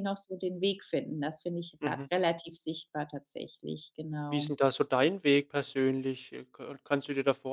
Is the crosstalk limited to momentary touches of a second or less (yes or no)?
yes